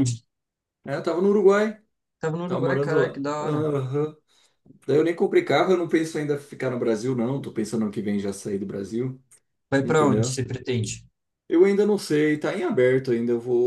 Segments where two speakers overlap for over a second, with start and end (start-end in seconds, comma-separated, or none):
2.5-3.7